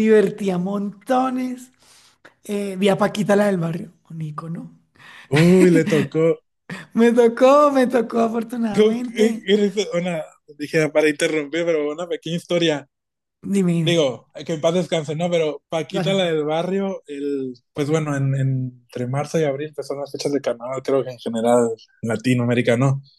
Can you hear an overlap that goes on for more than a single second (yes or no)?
no